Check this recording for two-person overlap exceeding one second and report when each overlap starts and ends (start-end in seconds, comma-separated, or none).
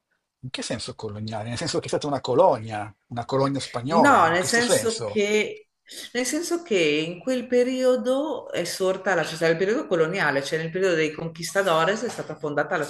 3.9-5.2